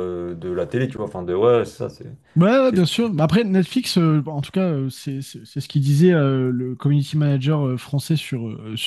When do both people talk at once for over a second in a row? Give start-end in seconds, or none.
none